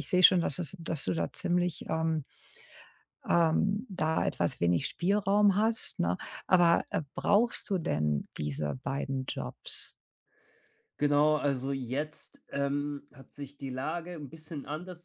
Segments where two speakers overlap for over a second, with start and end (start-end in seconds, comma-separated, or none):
none